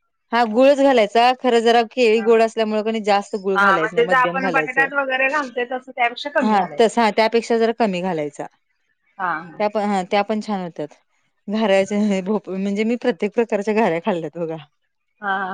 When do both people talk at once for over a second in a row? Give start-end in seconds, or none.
3.5-4.8